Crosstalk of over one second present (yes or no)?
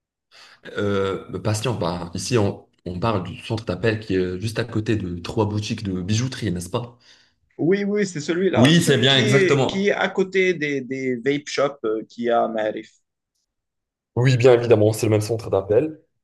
yes